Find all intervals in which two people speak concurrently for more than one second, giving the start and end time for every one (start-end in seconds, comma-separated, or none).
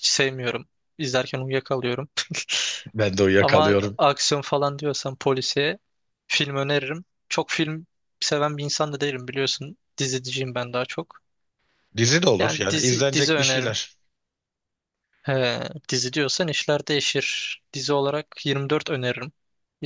12.4-13.8